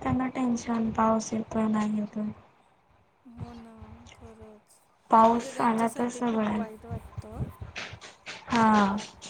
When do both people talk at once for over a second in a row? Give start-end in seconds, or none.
5.3-6.6